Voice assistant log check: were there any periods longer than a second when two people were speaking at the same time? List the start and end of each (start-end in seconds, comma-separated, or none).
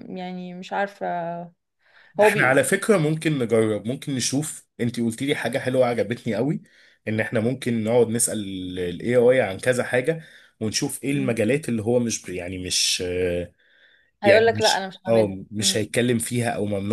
14.2-15.8